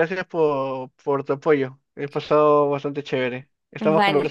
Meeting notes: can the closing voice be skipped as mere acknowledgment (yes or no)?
no